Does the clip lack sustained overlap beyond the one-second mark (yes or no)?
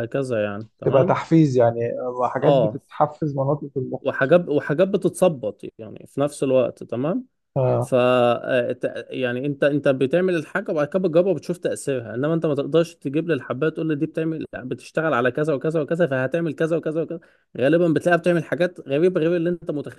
yes